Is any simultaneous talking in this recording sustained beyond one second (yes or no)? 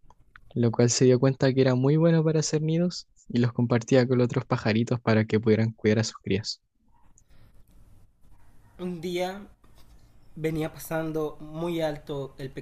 no